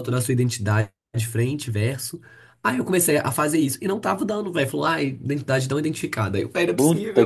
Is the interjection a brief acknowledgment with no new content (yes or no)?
no